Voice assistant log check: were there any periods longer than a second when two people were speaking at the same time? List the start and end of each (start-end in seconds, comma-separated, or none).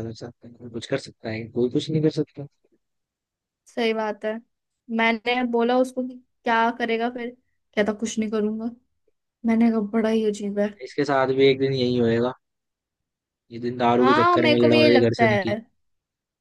14.0-15.5